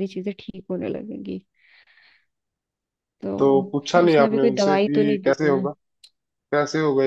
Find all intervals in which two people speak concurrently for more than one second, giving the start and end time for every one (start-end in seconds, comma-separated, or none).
3.4-5.6